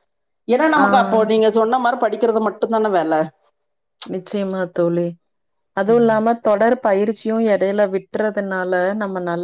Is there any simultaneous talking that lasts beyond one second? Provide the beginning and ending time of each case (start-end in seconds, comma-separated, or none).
none